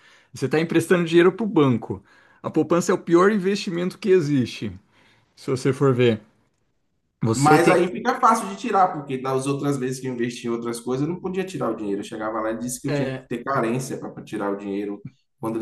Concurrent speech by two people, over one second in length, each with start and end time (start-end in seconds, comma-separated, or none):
none